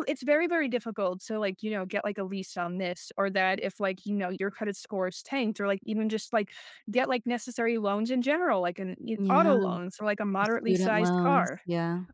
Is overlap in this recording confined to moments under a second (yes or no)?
no